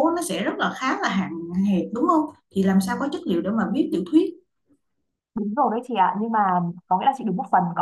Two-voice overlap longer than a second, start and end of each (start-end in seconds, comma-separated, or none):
none